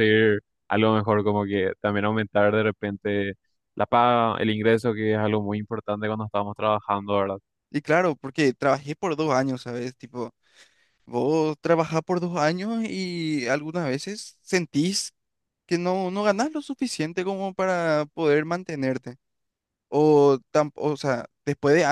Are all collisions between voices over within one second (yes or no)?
yes